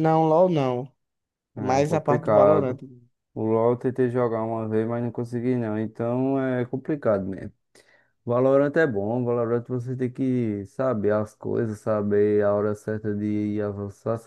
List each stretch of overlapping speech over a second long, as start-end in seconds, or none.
1.6-2.8